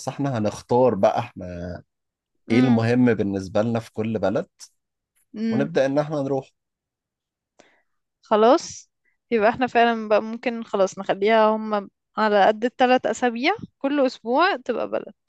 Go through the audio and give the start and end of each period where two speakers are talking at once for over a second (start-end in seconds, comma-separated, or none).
none